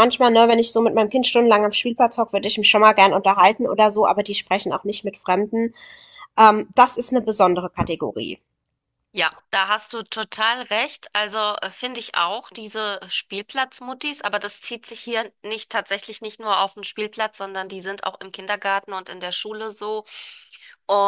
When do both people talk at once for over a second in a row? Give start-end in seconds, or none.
none